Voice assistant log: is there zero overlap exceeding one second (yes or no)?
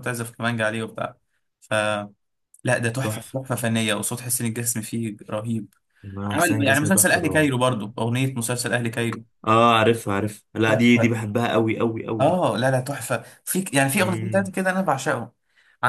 no